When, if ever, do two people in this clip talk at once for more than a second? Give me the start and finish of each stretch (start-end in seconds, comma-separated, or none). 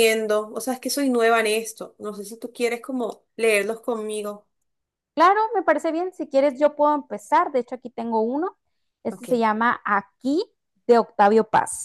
none